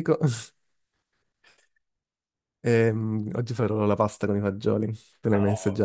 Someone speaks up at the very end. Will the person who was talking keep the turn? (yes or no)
no